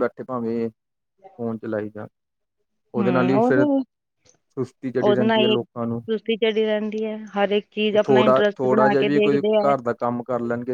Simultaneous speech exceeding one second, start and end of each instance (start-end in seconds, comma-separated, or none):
7.9-9.7